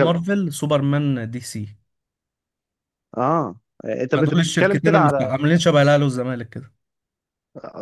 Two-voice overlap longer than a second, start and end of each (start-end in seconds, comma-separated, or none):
4.2-5.4